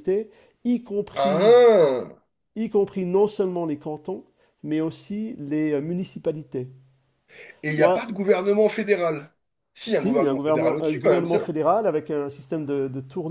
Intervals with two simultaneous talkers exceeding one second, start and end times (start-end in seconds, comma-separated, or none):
9.9-11.5